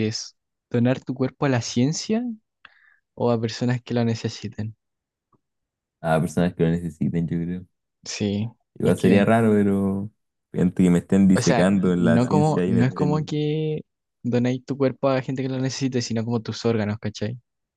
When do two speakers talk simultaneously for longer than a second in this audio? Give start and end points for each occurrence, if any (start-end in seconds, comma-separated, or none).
11.3-13.3